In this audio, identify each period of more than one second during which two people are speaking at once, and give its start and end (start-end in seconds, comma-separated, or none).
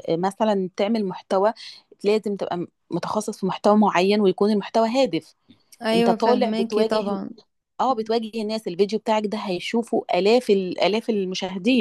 5.9-7.2